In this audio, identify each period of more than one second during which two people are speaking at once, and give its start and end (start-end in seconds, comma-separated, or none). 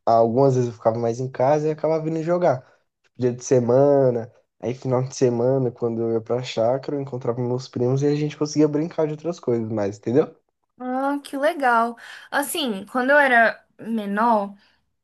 none